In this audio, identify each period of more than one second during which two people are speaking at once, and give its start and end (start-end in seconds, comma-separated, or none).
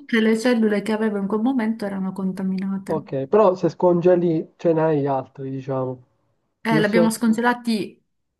none